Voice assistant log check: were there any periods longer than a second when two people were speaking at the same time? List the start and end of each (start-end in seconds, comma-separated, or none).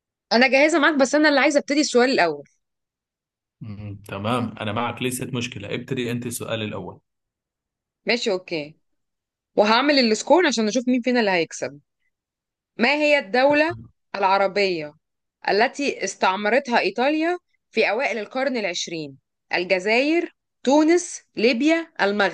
none